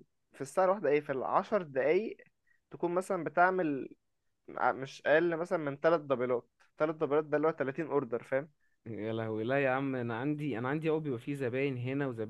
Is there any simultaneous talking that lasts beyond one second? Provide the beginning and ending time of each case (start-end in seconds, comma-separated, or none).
none